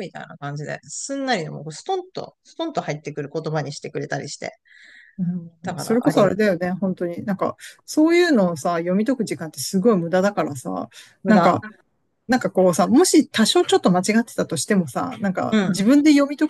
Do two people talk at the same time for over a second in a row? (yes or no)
no